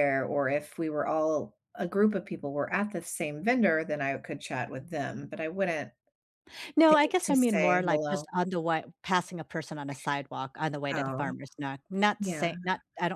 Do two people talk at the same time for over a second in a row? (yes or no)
yes